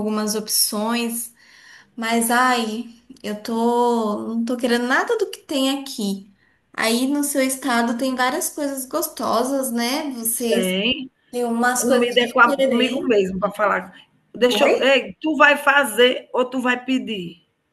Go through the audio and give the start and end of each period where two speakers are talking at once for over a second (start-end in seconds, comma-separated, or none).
11.8-13.1